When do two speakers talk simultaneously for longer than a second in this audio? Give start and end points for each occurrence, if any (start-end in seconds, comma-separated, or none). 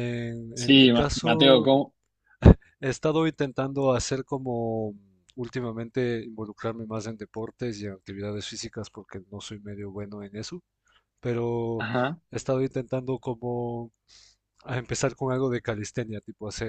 0.5-1.7